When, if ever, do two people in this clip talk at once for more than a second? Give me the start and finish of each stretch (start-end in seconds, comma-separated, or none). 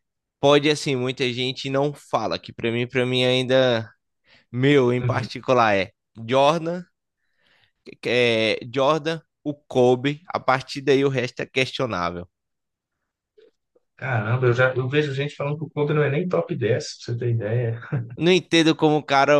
none